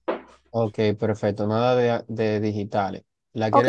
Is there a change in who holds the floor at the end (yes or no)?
yes